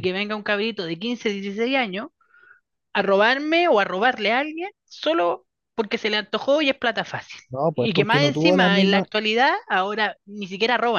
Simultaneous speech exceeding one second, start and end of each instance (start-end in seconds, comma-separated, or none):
7.5-9.1